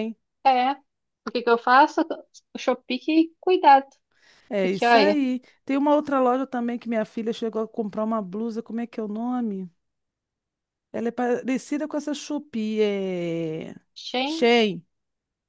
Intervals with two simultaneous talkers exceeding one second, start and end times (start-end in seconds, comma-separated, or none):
none